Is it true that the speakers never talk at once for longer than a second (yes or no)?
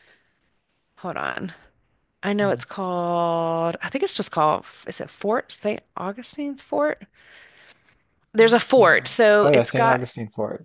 no